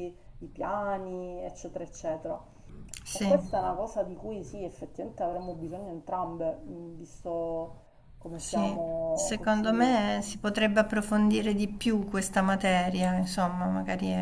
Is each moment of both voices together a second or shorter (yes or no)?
no